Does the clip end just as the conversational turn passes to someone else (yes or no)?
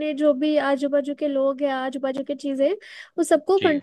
no